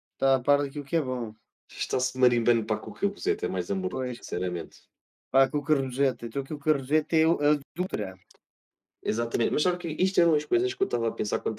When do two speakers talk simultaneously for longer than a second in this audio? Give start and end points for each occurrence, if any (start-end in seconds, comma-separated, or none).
none